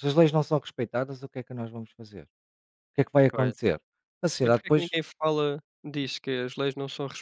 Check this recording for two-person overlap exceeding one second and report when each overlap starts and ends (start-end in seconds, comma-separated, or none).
none